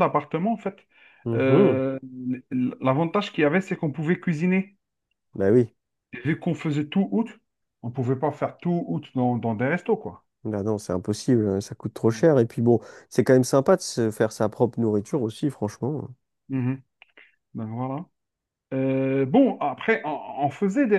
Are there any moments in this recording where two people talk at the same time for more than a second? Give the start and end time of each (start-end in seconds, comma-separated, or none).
none